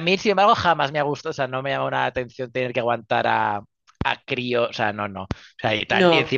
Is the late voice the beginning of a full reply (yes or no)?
no